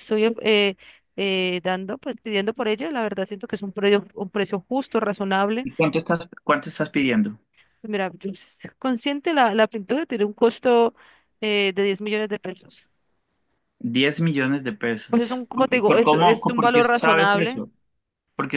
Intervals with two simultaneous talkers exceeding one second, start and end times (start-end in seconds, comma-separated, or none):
15.1-17.6